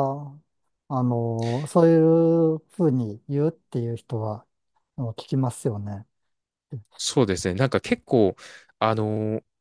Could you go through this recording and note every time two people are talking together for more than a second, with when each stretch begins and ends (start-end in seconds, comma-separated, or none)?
none